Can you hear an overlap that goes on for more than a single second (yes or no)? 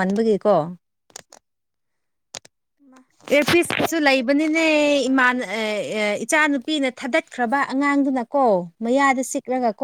yes